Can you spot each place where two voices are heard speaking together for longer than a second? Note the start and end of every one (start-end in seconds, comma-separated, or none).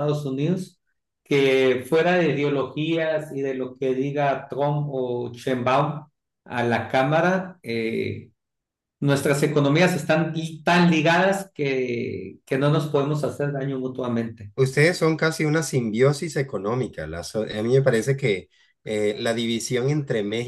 none